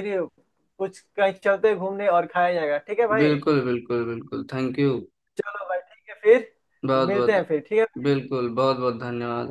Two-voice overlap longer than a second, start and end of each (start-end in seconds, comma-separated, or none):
none